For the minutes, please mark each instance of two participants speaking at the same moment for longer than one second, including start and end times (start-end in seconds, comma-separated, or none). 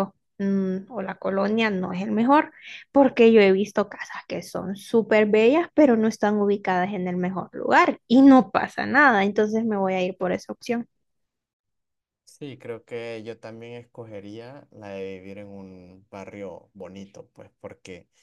none